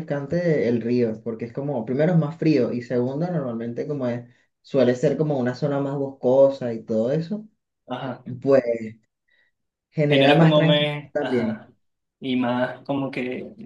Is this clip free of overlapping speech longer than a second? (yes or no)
no